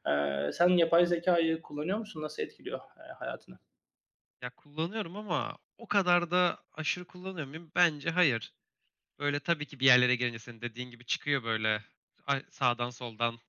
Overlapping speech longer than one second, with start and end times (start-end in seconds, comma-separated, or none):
none